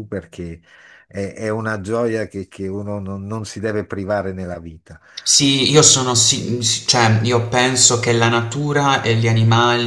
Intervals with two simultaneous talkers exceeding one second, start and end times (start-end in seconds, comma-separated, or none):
none